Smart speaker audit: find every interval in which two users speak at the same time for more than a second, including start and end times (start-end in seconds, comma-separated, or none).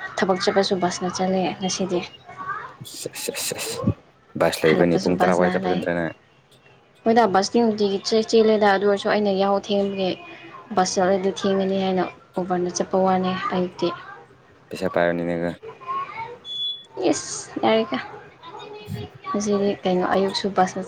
4.6-5.8